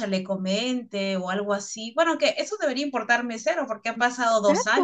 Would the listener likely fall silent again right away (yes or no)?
no